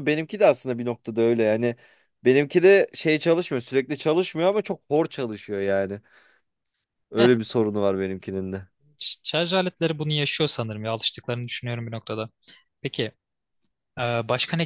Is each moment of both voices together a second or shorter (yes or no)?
yes